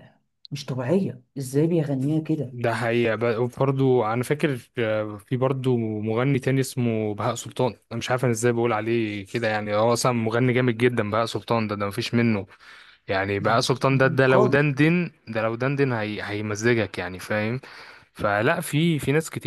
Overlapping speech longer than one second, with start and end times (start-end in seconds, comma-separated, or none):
13.4-14.7